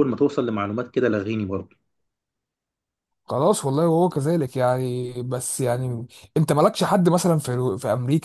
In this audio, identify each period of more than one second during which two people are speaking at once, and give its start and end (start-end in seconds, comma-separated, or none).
none